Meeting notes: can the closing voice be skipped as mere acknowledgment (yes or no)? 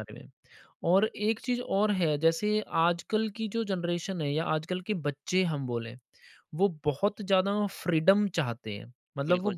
yes